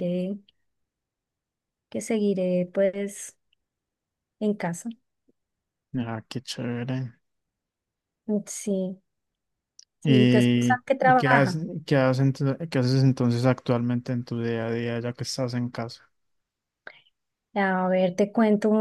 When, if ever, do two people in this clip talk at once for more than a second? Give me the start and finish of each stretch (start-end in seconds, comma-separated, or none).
10.0-11.6